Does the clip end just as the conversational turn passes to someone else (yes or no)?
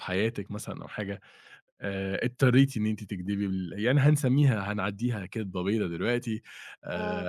no